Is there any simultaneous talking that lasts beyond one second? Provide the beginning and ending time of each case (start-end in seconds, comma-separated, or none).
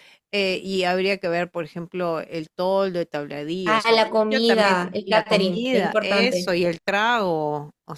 3.6-6.5